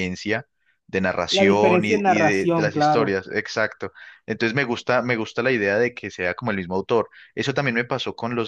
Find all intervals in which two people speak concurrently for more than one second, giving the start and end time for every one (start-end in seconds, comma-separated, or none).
1.3-3.1